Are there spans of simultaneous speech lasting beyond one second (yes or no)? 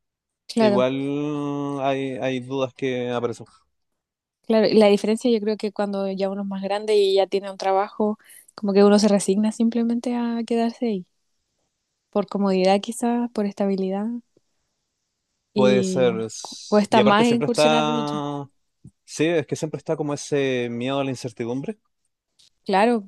yes